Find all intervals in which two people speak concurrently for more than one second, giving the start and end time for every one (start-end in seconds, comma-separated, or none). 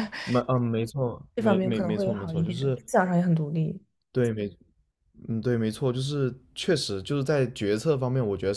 1.3-2.8